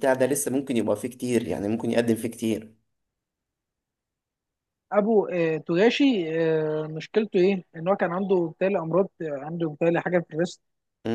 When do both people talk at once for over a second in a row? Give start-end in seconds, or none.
none